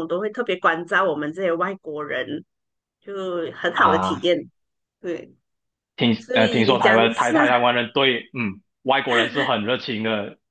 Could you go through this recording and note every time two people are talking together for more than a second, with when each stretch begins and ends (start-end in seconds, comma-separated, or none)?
6.2-7.4